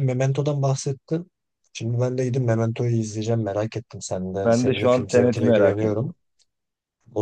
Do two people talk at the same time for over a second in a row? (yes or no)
yes